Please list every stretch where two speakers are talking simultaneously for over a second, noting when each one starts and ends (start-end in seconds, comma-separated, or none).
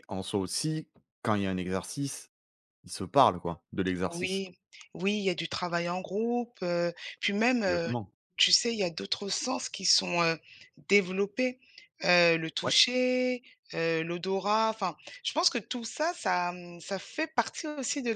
none